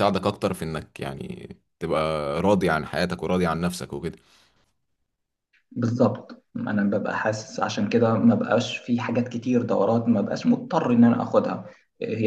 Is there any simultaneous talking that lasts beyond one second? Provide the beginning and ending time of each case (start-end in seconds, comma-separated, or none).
none